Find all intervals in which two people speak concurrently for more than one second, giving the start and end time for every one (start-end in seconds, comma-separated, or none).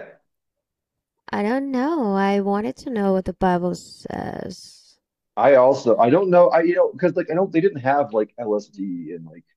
none